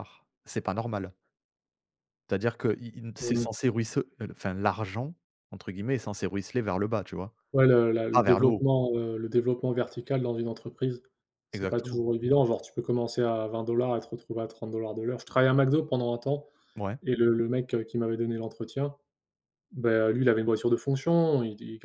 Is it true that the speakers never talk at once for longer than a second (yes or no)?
yes